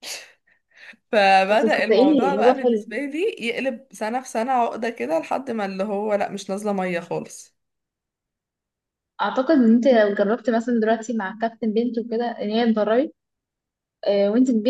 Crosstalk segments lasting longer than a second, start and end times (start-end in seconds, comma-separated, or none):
1.5-3.0